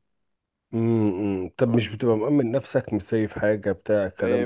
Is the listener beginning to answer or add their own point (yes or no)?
yes